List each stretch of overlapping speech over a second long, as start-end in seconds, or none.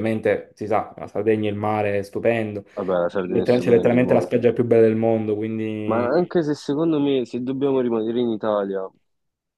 3.1-4.3